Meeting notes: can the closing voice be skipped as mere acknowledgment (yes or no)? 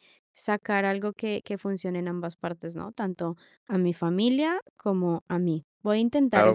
no